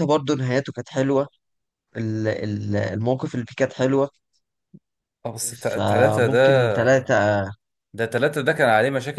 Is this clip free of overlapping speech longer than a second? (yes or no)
no